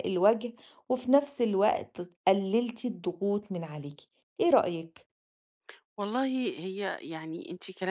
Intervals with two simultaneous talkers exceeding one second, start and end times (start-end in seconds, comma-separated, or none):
none